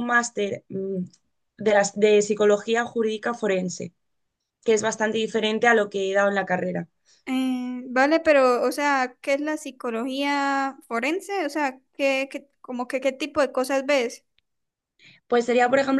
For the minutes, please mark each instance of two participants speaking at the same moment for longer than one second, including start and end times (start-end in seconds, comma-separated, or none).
none